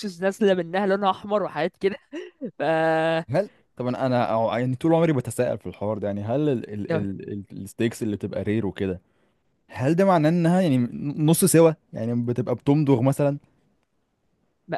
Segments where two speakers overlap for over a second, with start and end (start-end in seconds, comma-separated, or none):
none